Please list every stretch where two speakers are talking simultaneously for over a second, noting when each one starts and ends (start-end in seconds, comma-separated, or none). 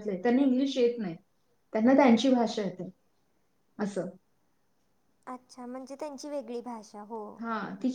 none